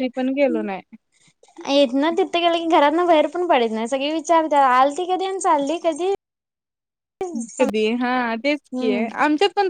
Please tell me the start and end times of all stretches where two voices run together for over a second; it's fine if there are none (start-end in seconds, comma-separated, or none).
none